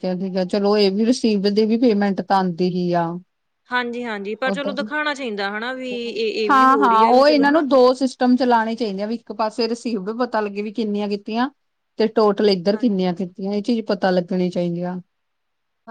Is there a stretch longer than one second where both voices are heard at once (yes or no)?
no